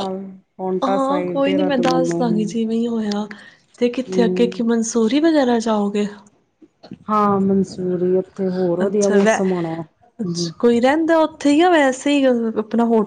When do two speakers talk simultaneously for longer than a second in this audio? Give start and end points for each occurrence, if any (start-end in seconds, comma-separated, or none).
0.8-2.5